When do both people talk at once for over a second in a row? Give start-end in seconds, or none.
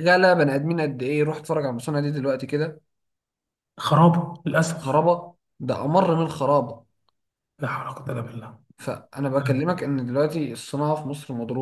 none